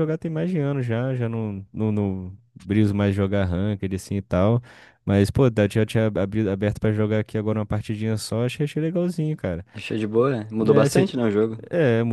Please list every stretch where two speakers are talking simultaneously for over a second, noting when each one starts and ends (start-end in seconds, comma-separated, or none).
none